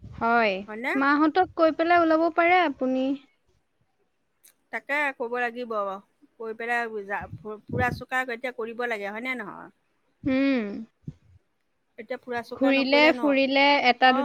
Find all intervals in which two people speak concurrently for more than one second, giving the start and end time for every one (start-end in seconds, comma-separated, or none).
none